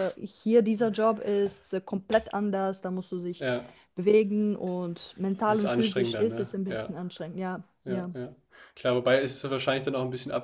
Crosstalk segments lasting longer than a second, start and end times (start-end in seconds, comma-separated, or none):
5.5-6.9